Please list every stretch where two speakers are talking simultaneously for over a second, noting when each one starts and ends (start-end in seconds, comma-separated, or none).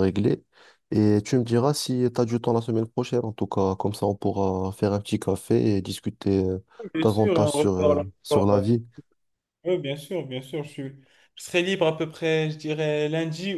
7.0-8.7